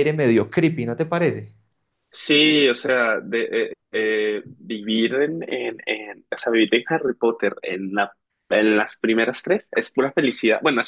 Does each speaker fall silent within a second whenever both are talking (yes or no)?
yes